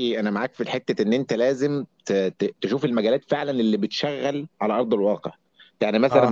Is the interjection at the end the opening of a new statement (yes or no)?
no